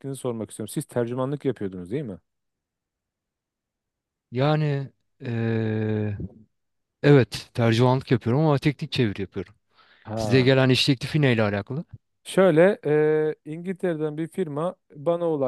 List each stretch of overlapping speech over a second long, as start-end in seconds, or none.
none